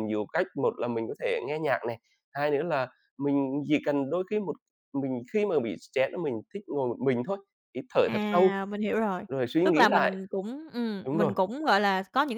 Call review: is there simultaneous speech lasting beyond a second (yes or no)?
no